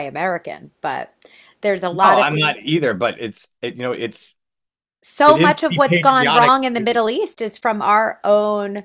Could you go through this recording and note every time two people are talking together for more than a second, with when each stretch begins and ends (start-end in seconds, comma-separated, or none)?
5.2-7.0